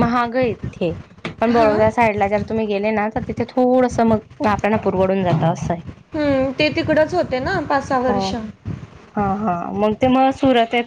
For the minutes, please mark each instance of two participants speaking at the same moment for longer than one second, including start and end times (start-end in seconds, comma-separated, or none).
none